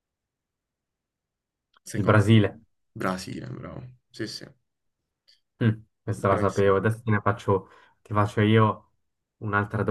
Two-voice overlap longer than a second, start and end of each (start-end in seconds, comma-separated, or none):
none